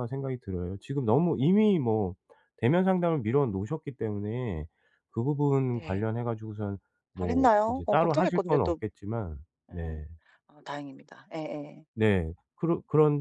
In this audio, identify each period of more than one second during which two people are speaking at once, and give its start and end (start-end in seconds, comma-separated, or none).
7.2-8.8